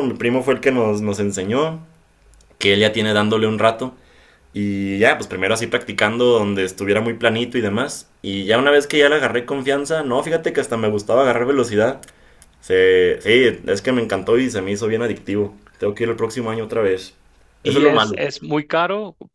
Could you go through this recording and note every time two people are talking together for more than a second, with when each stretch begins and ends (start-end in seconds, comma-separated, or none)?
none